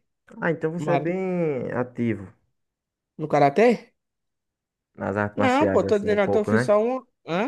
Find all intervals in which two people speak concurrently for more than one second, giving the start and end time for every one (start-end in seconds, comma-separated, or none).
5.3-6.7